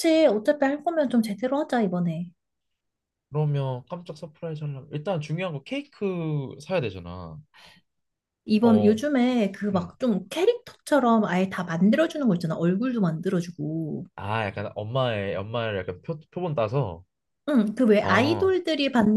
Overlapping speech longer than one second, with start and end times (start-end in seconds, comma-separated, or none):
none